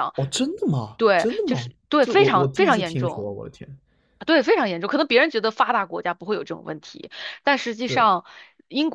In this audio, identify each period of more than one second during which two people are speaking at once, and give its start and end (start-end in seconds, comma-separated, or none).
1.0-3.3